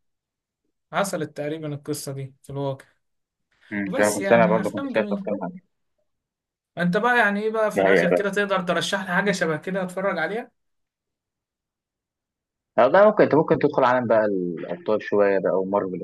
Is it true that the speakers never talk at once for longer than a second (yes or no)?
no